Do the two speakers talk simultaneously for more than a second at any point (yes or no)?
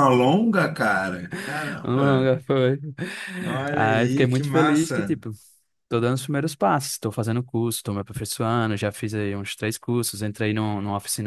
yes